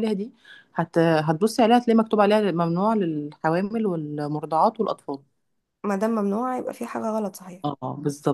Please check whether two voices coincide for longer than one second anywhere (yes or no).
no